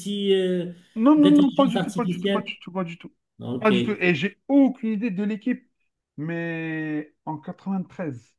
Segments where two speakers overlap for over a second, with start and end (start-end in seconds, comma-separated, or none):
1.2-2.6